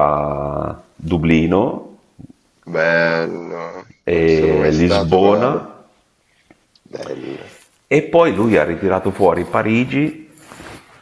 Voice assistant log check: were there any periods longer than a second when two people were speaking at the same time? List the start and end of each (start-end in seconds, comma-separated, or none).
4.1-5.5